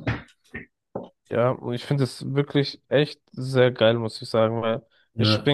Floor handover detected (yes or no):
no